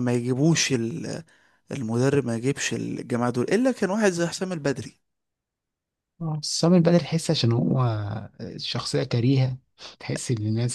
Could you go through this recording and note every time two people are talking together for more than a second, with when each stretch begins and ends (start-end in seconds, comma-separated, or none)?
none